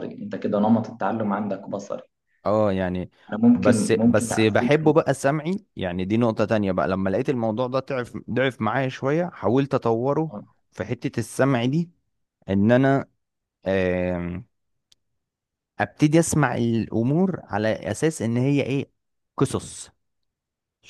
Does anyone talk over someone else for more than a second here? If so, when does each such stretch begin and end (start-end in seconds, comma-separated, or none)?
3.5-4.7